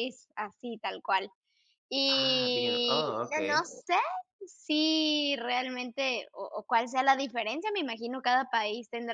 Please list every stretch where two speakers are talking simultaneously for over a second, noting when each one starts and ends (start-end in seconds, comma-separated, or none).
2.1-3.7